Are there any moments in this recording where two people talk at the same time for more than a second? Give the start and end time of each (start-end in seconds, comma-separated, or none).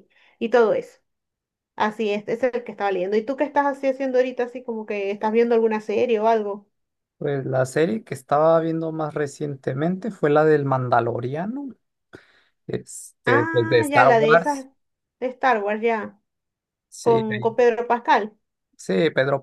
13.2-14.6